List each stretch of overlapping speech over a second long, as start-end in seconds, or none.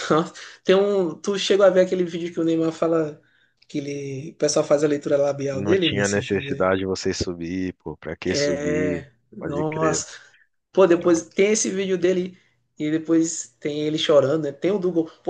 5.5-6.7, 8.2-10.1